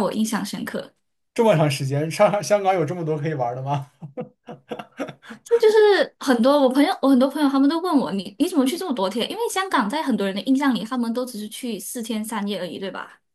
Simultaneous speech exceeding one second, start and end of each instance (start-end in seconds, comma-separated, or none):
none